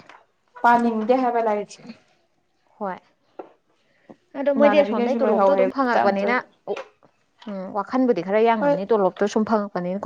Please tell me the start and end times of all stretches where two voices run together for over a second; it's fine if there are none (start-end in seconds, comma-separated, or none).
4.5-6.5